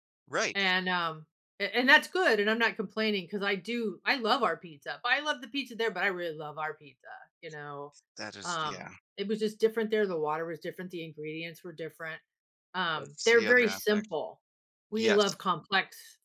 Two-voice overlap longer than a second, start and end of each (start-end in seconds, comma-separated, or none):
12.9-14.1